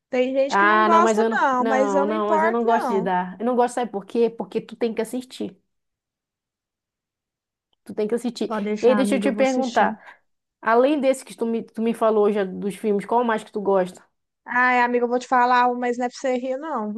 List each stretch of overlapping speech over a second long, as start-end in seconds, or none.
0.5-3.1, 8.4-9.9